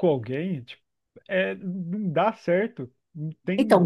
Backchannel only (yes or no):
no